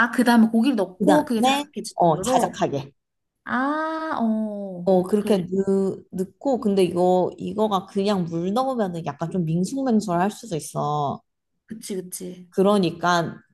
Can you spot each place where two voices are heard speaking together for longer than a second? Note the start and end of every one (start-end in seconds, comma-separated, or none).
1.0-2.6